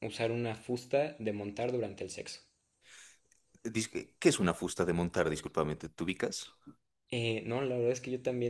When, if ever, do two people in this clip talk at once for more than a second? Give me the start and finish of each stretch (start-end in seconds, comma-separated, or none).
none